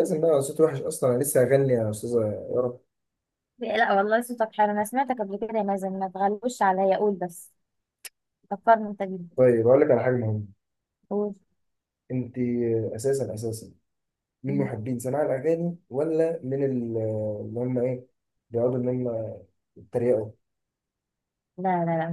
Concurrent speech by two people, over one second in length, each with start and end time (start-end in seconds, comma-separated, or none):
none